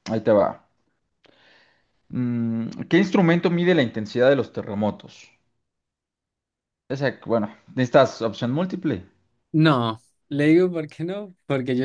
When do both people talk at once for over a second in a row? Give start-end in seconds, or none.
none